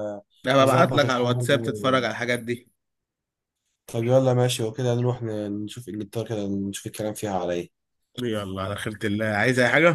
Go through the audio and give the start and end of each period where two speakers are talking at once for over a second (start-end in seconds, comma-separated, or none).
0.6-2.0